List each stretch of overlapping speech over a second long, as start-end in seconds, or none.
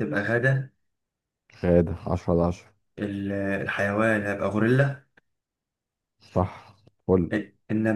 none